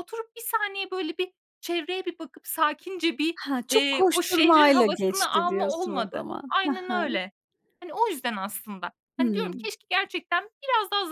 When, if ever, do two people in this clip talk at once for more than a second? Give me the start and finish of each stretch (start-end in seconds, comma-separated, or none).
3.4-7.2